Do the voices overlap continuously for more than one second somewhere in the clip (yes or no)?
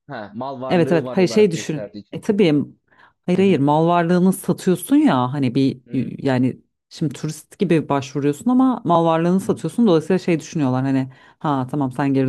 yes